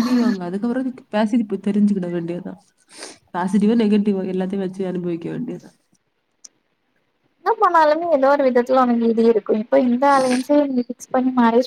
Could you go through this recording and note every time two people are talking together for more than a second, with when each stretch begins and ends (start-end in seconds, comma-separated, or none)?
none